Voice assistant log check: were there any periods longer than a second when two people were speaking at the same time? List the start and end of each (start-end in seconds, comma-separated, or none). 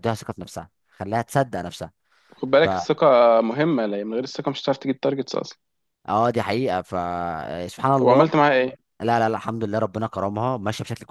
none